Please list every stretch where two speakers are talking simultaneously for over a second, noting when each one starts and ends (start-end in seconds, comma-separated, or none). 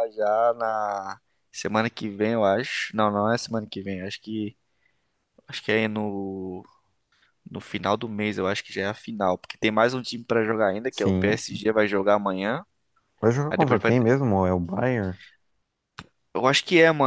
none